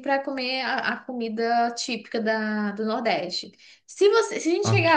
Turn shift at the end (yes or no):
no